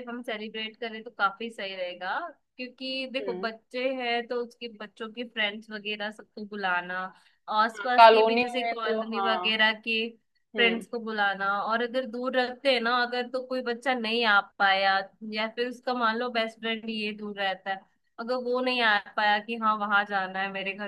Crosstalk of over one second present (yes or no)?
yes